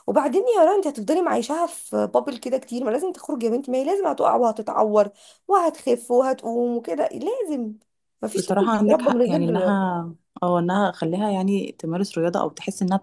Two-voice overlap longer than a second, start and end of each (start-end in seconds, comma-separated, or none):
8.4-9.8